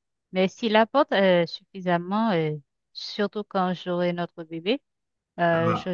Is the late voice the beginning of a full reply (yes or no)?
no